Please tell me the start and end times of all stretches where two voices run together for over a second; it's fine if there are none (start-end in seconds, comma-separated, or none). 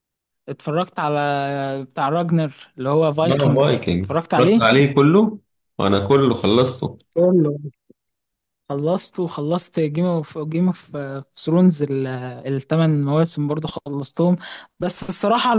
3.2-4.6